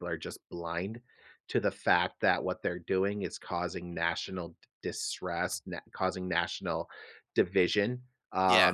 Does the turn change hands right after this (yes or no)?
no